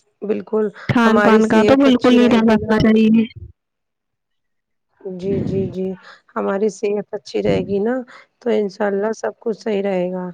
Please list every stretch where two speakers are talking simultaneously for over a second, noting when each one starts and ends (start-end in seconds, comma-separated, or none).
1.1-2.8